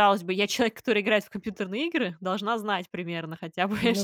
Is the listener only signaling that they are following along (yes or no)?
yes